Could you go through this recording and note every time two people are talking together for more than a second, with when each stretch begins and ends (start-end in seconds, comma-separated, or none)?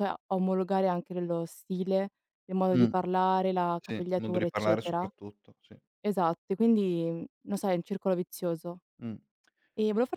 3.8-5.1